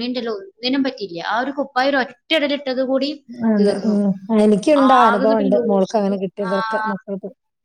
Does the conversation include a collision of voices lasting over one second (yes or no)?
yes